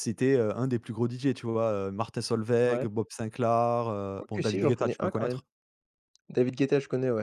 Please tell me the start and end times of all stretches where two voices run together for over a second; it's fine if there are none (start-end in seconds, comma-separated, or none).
4.1-5.4